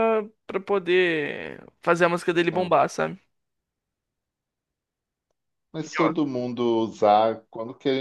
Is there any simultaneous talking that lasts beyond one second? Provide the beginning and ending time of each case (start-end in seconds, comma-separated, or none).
none